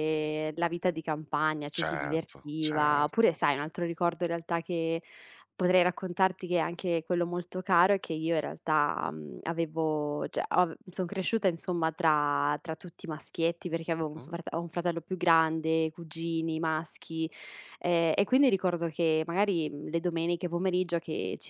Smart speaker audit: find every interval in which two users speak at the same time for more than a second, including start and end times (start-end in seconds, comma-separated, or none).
1.7-3.2